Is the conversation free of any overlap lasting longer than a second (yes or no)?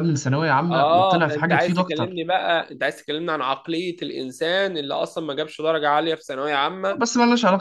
no